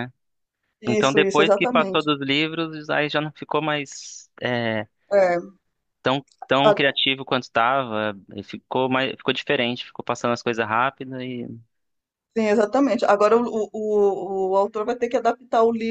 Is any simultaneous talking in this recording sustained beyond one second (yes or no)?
yes